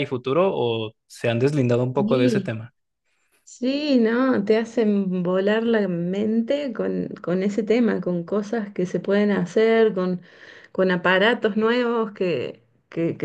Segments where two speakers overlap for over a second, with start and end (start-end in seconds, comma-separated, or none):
none